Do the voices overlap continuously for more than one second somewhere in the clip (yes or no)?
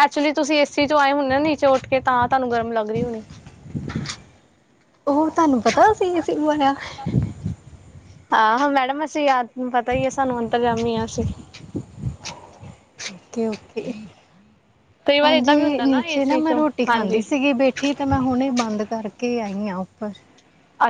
yes